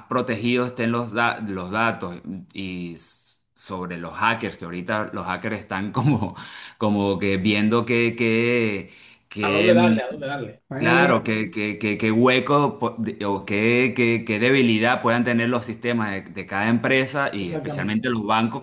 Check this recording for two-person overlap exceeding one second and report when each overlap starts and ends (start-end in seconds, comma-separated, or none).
none